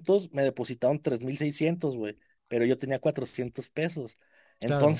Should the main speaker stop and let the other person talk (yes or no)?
no